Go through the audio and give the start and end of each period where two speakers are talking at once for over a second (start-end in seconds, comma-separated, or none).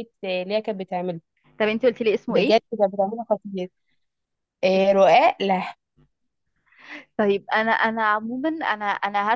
none